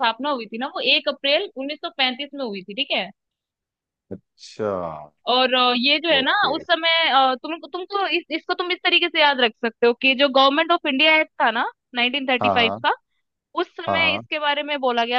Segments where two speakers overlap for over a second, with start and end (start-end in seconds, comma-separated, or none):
none